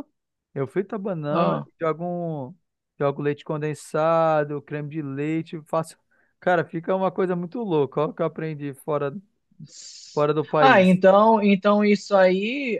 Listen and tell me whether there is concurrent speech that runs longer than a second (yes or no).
no